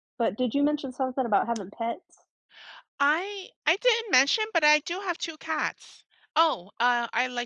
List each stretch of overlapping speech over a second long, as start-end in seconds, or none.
none